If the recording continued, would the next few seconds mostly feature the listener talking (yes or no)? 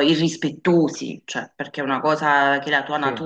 no